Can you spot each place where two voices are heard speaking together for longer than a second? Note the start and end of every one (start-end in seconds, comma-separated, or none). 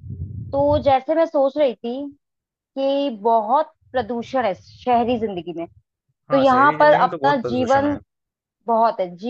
6.3-8.0